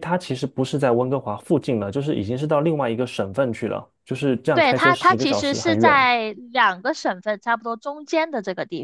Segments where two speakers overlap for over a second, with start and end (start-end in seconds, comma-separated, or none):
4.5-6.0